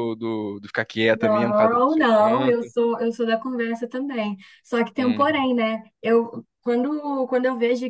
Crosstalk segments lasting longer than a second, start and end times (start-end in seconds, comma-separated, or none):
1.1-2.7